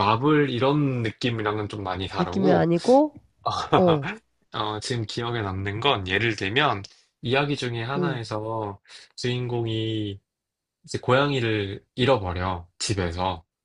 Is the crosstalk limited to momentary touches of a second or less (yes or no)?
yes